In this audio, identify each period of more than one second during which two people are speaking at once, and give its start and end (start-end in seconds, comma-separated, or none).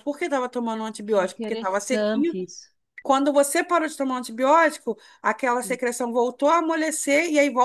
1.1-2.4